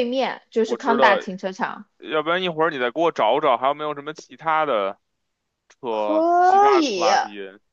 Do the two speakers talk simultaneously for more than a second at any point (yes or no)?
yes